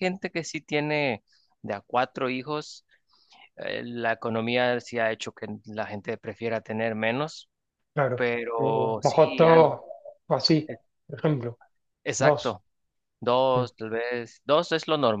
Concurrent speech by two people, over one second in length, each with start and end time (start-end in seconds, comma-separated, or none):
8.1-9.7